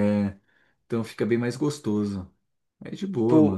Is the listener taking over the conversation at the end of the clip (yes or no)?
yes